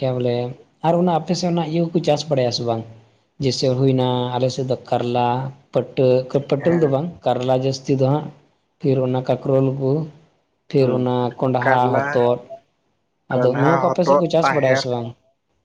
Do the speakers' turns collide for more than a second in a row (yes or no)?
yes